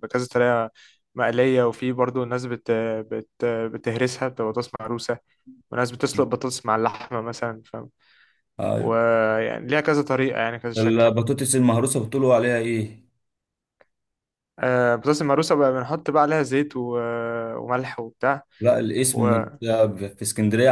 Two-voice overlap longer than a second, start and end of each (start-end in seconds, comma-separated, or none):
none